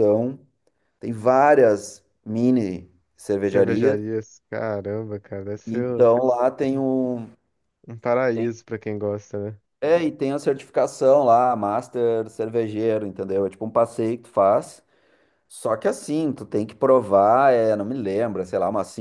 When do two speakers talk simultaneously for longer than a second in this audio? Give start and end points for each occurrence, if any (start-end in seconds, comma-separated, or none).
none